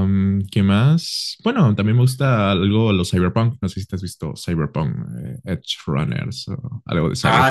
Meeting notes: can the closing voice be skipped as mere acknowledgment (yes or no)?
no